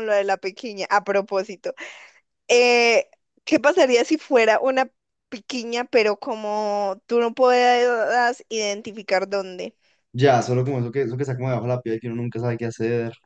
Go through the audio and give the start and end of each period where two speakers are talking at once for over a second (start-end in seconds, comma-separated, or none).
none